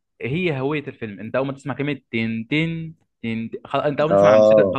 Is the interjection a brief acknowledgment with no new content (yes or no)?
yes